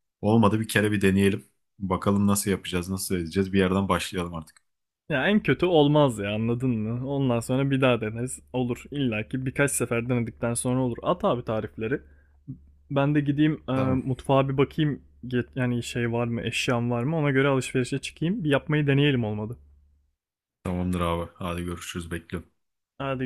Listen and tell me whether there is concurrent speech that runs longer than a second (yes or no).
no